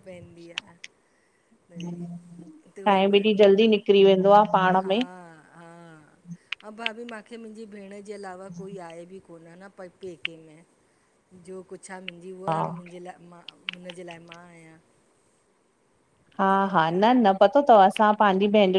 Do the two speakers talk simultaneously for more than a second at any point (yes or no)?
yes